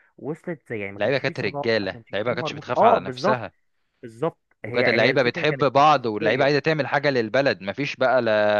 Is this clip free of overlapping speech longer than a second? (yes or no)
no